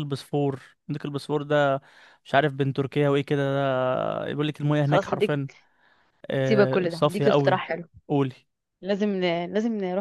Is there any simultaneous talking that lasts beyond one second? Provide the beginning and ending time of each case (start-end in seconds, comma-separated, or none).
6.4-7.6